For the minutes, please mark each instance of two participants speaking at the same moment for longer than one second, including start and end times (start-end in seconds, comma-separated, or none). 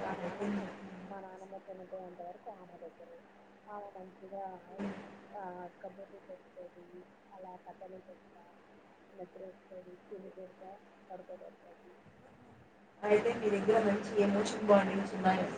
none